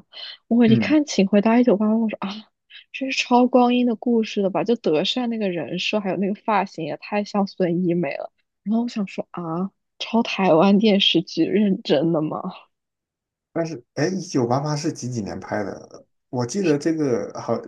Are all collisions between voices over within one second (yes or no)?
yes